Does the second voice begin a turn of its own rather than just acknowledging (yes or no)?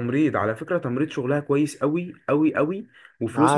no